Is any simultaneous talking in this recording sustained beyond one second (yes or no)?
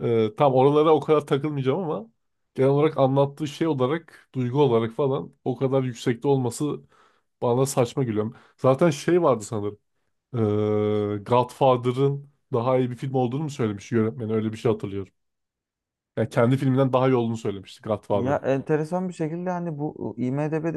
no